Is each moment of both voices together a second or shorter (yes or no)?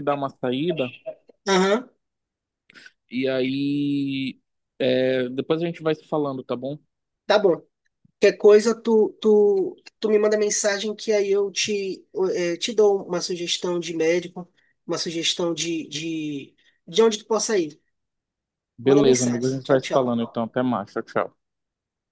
no